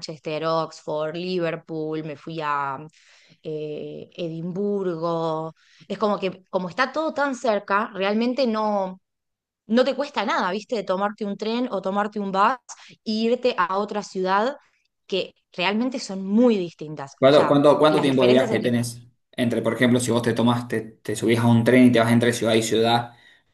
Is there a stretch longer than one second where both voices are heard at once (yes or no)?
yes